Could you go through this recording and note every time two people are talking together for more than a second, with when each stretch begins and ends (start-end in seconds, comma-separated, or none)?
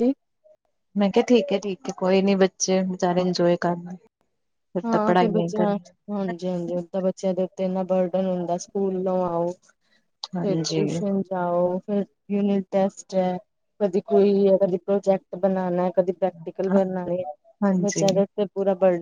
none